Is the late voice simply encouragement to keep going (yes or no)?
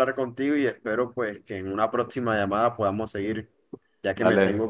no